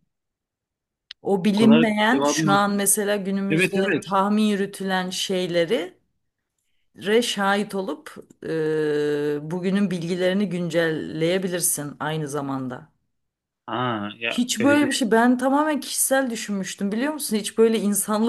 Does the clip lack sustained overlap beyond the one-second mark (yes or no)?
no